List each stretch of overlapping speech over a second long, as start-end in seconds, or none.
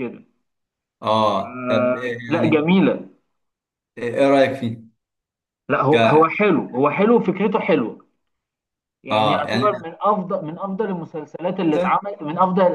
1.4-2.7